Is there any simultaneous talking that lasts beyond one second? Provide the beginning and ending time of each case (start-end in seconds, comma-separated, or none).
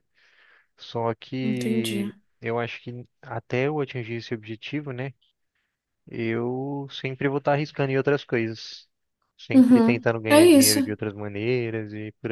9.5-10.9